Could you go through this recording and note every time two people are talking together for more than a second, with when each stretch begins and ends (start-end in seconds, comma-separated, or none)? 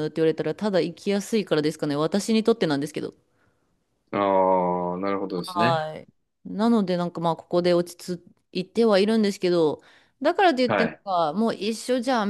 none